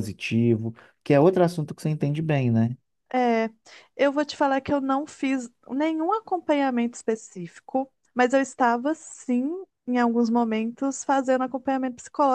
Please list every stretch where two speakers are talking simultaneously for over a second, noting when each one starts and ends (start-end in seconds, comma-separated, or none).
none